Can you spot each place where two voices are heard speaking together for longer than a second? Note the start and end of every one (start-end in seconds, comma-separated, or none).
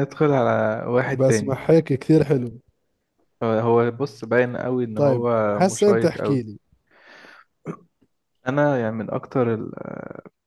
5.0-6.4